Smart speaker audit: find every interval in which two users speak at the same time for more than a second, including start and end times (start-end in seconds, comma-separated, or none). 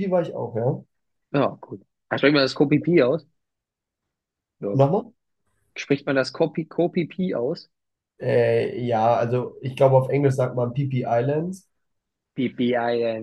none